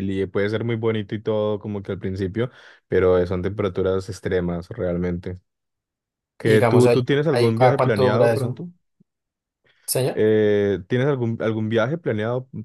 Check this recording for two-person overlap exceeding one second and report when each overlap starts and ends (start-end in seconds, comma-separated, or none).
6.4-8.6